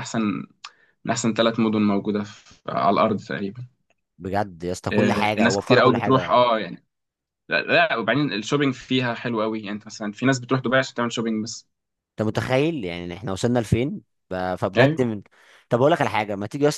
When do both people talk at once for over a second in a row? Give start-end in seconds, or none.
4.9-6.4